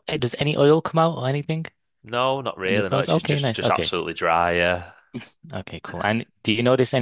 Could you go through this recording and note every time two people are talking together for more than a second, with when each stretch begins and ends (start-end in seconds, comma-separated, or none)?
2.7-3.9